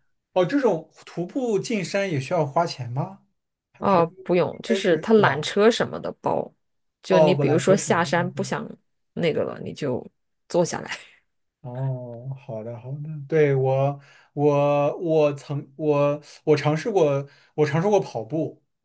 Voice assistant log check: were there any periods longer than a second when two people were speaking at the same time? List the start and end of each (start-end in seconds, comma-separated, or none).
3.8-5.5, 7.1-8.5